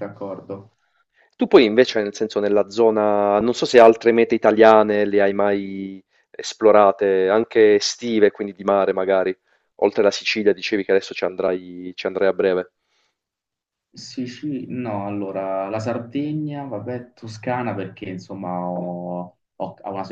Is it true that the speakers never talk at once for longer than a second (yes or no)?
yes